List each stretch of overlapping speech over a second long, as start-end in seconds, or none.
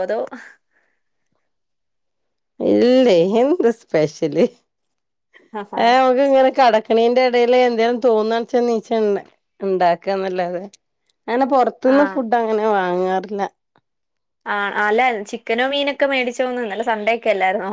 none